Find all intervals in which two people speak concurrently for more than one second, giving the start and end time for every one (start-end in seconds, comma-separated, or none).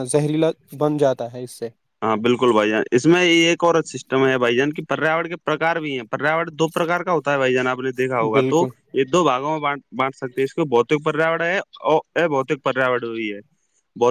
none